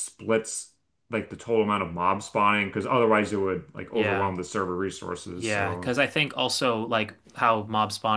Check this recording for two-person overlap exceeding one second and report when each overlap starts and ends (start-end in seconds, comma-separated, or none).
none